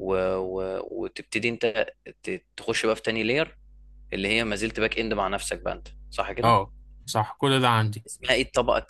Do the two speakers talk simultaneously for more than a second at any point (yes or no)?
no